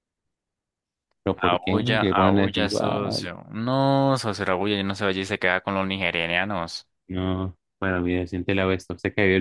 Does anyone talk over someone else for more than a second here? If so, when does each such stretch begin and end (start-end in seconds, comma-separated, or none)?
1.4-2.7